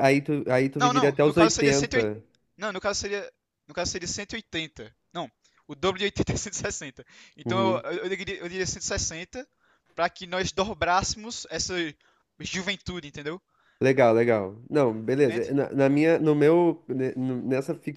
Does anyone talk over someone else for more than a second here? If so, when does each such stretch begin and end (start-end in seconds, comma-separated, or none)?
0.8-2.1